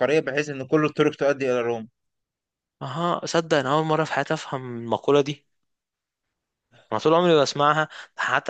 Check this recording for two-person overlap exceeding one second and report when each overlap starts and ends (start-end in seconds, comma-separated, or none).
none